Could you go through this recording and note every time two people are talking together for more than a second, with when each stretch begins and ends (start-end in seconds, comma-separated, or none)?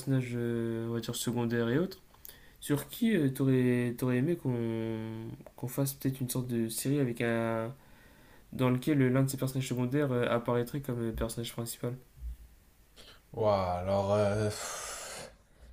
none